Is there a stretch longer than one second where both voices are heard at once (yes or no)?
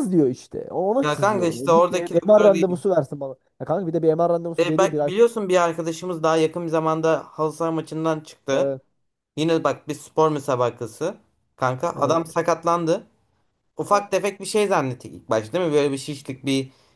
yes